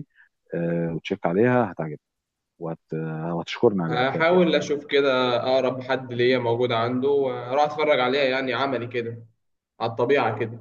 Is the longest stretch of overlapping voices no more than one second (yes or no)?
yes